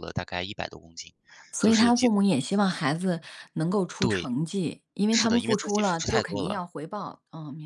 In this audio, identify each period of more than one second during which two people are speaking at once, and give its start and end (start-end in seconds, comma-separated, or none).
5.1-6.6